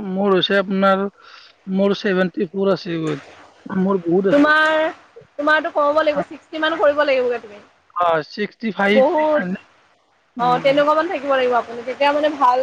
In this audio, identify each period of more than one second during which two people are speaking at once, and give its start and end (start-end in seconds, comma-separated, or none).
none